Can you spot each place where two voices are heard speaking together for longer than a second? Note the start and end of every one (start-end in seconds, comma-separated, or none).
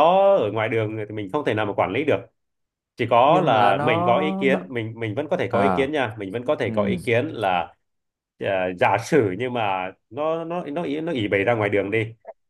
3.3-4.7